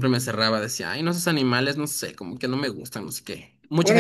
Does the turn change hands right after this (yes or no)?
yes